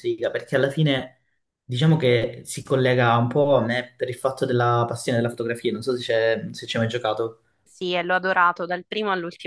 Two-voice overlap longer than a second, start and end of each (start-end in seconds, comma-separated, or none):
none